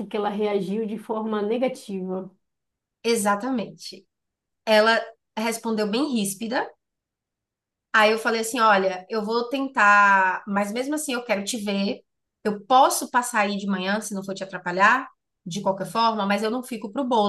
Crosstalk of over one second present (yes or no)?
no